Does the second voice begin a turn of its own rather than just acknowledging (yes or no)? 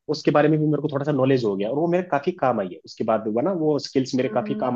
yes